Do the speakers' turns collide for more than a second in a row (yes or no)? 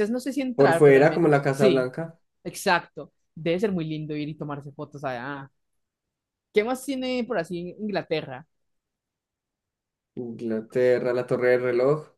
yes